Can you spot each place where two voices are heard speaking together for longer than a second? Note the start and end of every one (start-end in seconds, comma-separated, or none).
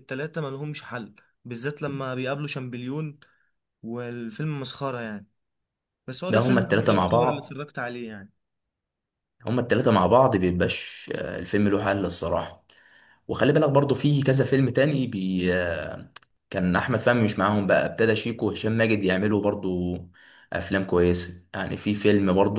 6.3-7.6